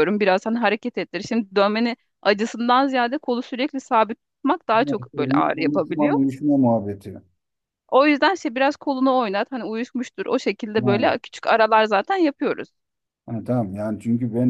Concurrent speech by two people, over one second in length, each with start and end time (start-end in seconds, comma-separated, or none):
4.7-6.2